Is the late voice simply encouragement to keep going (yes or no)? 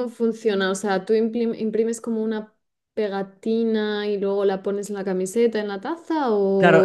no